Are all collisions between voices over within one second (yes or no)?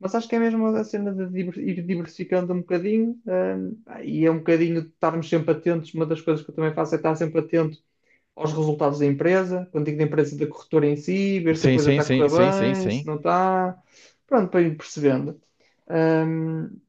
no